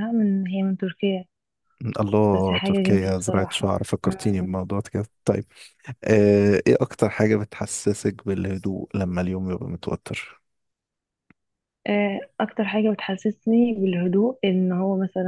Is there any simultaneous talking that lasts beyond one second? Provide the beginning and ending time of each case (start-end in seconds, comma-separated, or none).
2.3-3.7